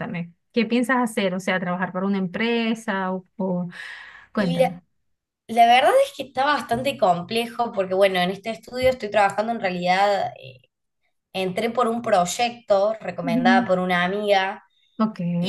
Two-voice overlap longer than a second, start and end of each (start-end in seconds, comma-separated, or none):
none